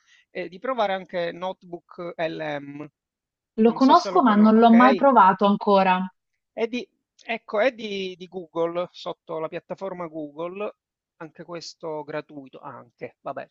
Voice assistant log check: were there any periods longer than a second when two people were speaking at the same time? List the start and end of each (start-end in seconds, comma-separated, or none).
3.6-5.1